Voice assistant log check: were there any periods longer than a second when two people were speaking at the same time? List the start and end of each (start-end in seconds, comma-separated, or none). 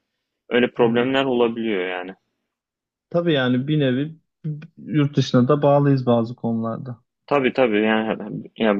none